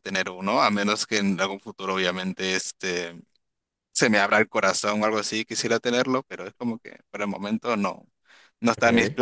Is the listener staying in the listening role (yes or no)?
yes